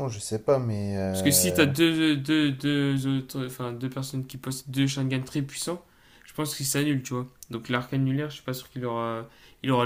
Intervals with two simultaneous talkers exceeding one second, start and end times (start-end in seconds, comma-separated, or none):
none